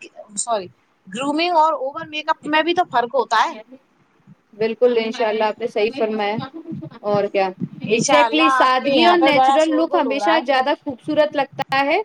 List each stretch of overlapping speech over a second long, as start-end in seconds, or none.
7.9-10.6